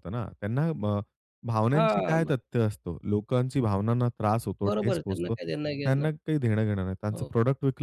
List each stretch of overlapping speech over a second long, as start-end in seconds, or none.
4.7-6.1